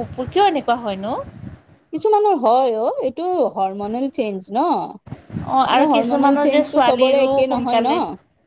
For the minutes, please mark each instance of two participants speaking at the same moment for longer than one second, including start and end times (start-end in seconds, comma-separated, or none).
5.7-7.9